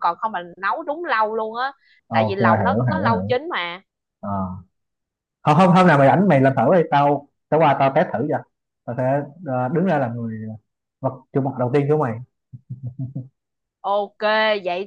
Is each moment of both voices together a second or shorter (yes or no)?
no